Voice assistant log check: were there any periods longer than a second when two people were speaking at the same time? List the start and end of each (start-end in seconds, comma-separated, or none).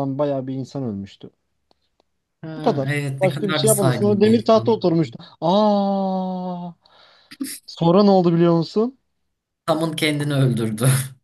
2.6-4.8